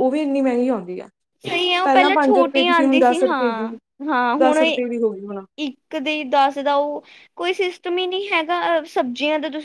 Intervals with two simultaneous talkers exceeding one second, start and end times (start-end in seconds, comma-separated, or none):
1.8-3.7